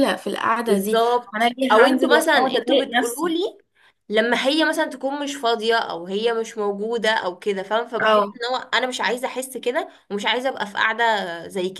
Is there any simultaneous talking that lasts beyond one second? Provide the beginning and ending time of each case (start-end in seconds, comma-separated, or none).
0.7-3.3